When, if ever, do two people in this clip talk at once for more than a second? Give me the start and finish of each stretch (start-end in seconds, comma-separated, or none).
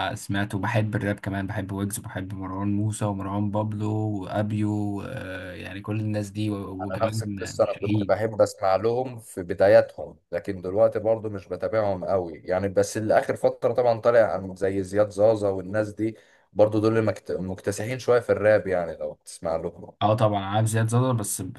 6.8-8.2